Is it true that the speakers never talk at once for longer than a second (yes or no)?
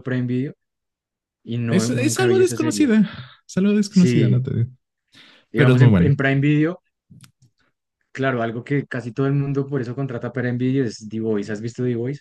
no